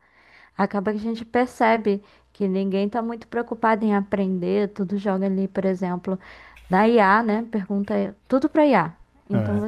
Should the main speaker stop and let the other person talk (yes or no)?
no